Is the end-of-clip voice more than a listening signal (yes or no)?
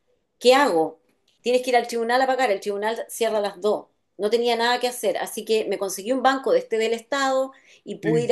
no